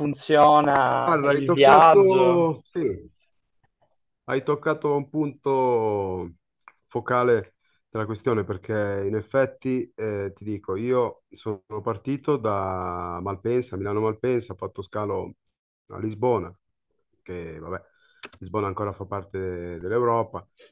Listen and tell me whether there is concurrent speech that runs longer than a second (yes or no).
yes